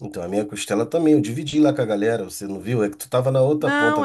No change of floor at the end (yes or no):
no